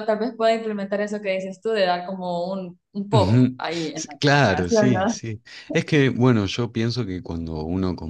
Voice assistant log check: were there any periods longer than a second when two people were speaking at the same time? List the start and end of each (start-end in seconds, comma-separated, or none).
3.1-5.2